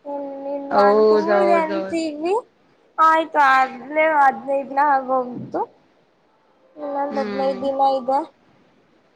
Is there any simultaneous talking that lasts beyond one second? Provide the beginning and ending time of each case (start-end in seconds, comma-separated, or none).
0.8-2.0